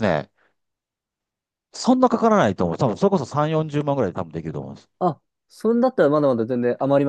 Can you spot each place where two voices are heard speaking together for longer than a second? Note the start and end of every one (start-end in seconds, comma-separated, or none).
none